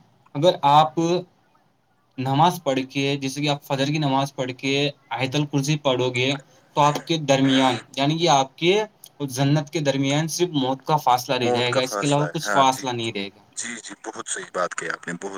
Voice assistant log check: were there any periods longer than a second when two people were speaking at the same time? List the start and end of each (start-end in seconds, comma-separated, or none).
11.2-12.8